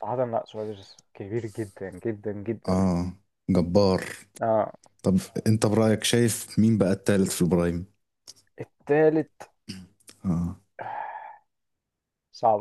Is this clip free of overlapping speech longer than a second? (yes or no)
yes